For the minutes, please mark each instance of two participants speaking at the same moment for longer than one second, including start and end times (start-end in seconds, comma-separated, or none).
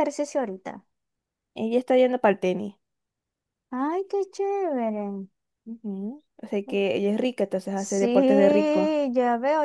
7.7-9.0